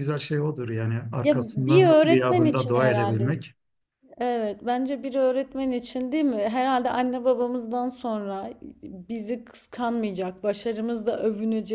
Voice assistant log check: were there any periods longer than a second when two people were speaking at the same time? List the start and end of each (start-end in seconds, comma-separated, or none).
1.2-3.4